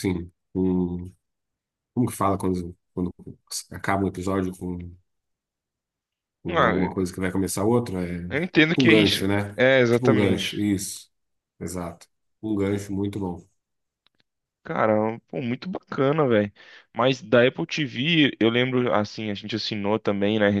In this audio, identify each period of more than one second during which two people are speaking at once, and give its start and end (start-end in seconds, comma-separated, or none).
8.3-10.6